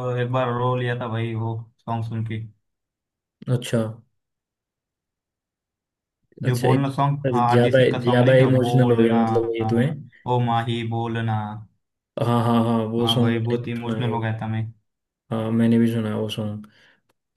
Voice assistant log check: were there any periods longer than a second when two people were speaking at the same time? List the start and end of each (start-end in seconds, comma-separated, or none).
6.5-9.2, 13.0-14.3